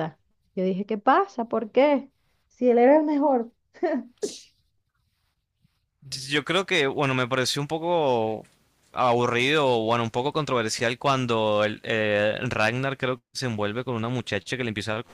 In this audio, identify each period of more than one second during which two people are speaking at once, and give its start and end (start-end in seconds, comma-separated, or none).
none